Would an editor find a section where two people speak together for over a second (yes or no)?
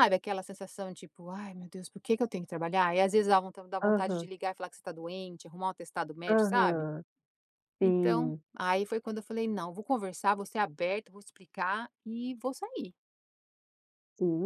no